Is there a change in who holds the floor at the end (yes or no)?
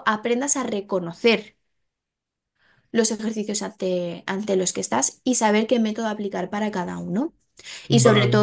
no